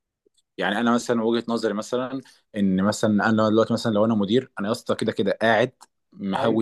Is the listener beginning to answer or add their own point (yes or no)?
no